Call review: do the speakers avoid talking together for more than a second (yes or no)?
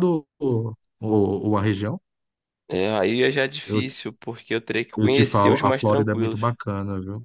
no